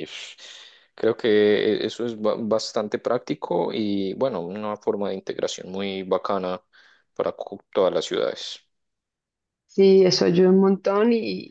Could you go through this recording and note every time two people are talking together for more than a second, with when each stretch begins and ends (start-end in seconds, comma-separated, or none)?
none